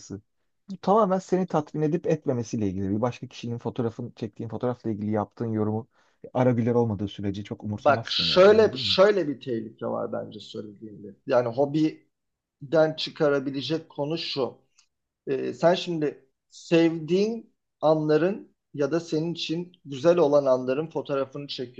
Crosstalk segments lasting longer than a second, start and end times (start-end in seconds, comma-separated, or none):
7.8-9.0